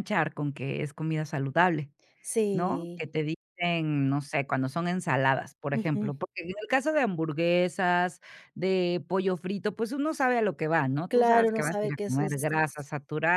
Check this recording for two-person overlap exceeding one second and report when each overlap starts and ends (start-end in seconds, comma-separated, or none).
11.1-12.5